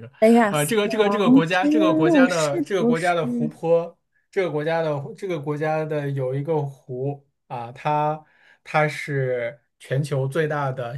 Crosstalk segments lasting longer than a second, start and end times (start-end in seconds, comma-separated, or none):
0.5-3.1